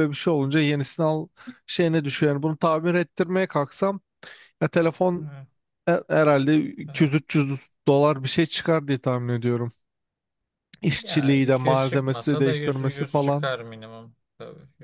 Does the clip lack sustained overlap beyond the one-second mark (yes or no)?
no